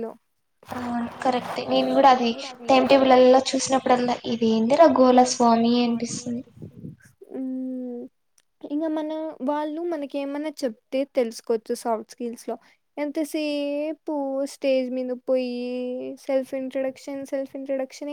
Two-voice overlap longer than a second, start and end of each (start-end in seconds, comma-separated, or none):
3.1-5.2